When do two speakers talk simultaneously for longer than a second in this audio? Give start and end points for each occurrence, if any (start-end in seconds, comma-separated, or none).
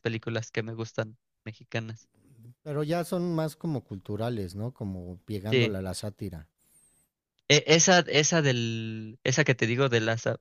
none